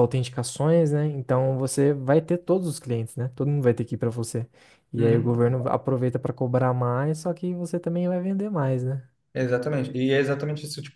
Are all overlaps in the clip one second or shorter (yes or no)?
yes